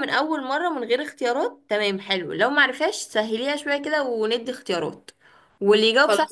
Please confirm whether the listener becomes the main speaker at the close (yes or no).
no